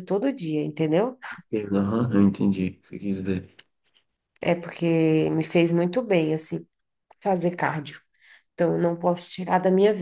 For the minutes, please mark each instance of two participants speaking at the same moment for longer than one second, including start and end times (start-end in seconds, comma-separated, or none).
none